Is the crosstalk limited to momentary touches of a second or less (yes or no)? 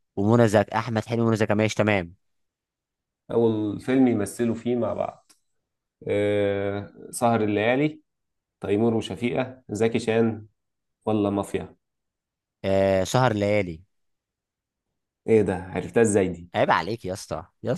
yes